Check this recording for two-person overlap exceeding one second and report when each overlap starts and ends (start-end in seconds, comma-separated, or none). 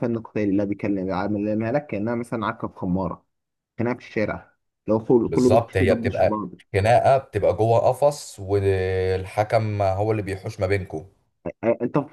5.3-6.5